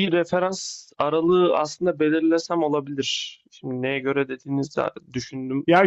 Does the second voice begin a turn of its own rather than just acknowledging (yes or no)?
yes